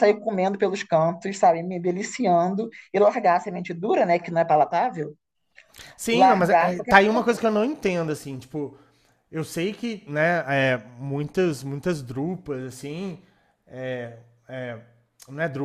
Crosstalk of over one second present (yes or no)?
yes